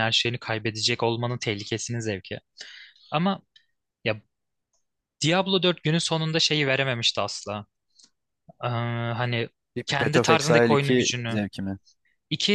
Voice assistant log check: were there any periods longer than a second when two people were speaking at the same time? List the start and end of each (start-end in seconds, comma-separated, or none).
9.9-11.4